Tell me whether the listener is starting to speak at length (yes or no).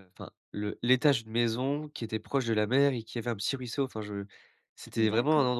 no